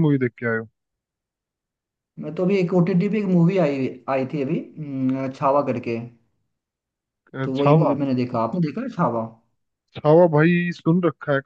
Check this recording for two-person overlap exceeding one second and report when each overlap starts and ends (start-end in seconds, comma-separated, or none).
none